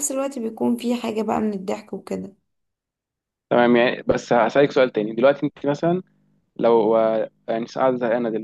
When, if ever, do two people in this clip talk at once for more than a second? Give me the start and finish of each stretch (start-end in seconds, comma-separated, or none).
none